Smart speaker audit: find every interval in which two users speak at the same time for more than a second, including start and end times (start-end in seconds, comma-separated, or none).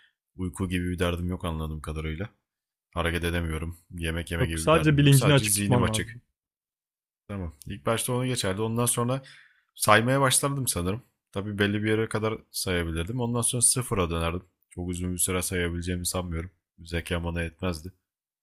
4.4-6.2